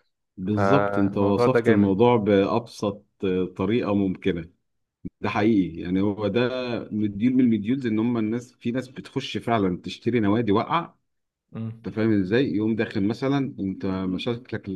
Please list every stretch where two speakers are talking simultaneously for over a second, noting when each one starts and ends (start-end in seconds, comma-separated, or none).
0.5-2.0